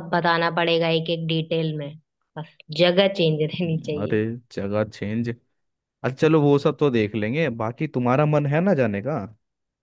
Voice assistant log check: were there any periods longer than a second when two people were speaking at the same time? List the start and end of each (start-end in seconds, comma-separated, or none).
none